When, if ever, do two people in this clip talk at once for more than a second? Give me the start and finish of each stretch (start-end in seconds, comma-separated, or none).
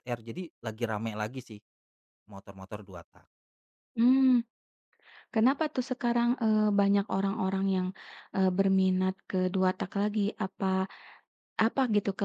none